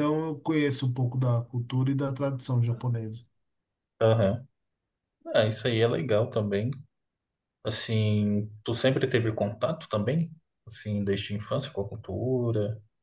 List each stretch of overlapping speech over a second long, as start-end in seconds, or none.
none